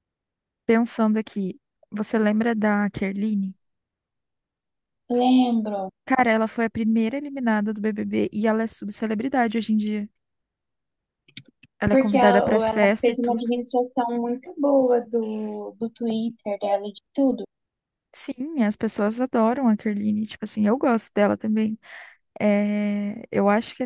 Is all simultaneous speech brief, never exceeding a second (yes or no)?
no